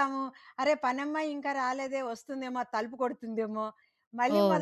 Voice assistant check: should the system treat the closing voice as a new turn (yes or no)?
no